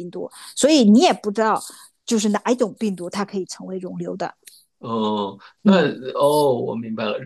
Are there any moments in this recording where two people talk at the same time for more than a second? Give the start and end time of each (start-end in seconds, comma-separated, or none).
none